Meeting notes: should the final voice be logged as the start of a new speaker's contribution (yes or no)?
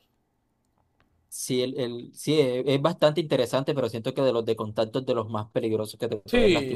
yes